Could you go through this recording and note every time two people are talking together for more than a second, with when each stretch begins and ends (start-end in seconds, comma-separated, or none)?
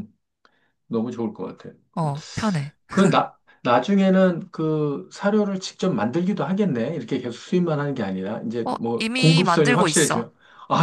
8.7-10.3